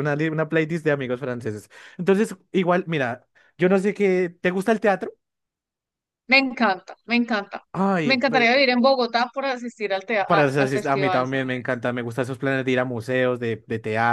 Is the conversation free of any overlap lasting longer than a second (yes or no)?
no